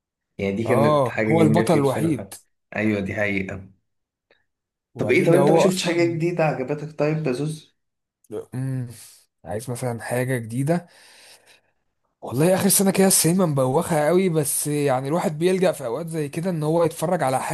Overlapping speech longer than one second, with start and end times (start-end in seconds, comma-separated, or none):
0.7-2.3, 5.0-6.2